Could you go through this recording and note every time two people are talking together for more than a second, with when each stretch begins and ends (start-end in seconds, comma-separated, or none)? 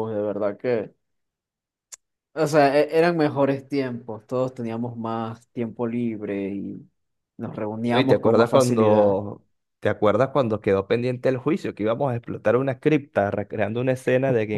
7.8-9.2